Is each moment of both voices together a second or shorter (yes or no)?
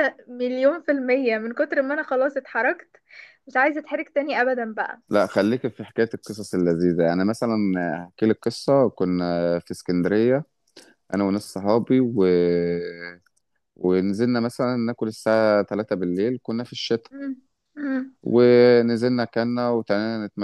yes